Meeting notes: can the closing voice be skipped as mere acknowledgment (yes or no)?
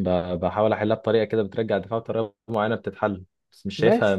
no